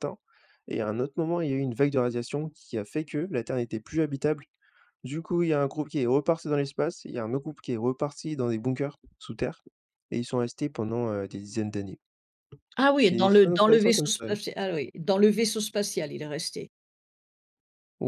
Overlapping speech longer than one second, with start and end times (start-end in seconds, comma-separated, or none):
13.0-14.3